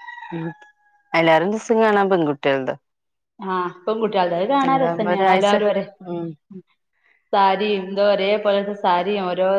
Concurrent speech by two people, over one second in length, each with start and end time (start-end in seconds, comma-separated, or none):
none